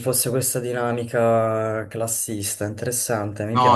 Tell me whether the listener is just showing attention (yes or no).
no